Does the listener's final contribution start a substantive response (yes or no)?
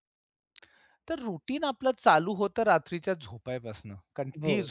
no